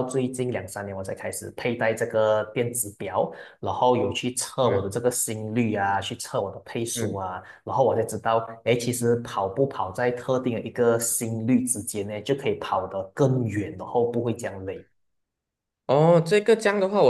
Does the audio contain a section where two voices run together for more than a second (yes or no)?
no